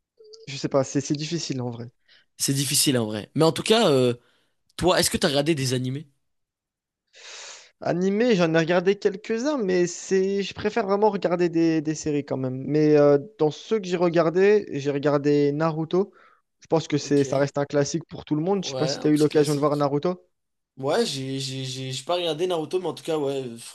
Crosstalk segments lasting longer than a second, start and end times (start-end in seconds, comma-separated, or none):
18.5-19.9